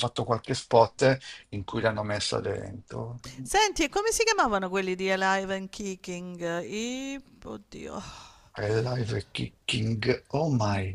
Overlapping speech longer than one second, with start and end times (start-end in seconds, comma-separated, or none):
none